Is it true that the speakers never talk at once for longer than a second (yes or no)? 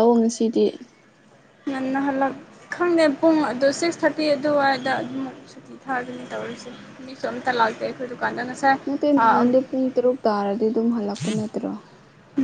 yes